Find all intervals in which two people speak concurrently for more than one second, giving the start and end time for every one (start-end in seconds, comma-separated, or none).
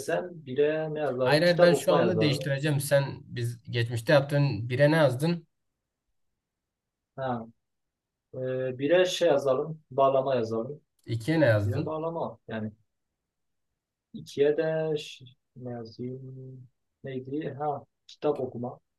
1.2-2.5